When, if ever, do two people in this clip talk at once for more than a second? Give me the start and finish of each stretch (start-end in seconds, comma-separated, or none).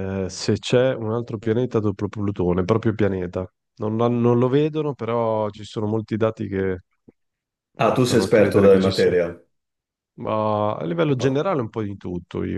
7.8-9.1